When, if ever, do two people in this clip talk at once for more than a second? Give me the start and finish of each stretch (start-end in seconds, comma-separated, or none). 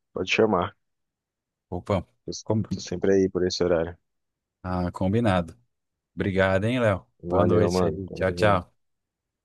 7.3-8.7